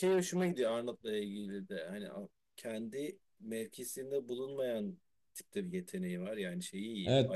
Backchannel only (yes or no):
no